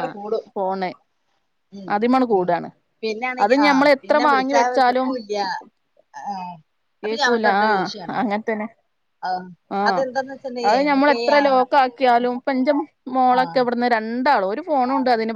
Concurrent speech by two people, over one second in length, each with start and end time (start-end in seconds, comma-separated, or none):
3.4-5.1